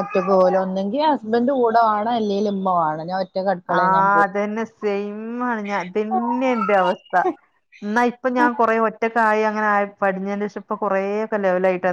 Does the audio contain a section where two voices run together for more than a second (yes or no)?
no